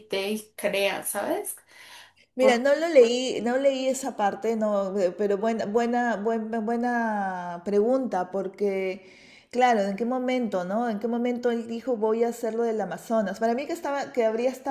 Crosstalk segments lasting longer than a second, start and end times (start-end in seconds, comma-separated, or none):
none